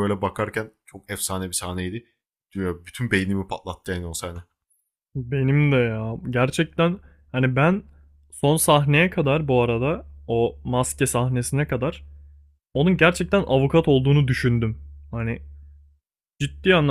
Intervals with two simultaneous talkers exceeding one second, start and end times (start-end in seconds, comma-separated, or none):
none